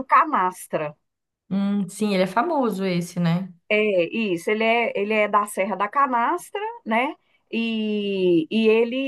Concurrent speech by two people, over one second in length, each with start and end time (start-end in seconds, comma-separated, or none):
none